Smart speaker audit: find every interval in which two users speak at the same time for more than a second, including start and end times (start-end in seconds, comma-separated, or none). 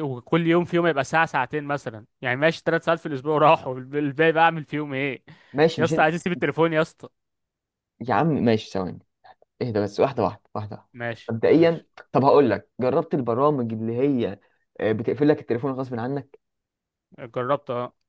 none